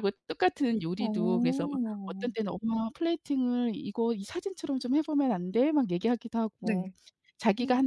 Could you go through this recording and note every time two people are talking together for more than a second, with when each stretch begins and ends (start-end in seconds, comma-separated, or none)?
1.0-2.3